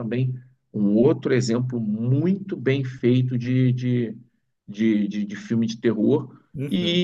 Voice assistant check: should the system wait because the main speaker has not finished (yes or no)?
yes